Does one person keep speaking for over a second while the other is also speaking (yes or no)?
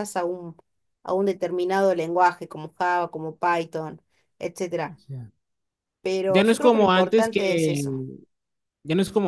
yes